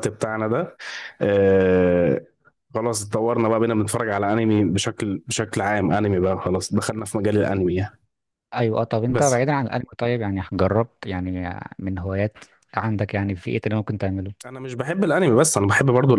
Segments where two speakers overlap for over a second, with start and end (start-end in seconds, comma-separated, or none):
none